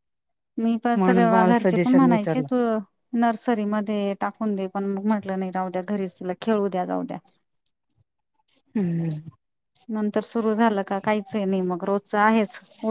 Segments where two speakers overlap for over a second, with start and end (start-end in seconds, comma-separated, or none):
1.0-2.5